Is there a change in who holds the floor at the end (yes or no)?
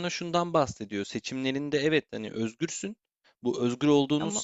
no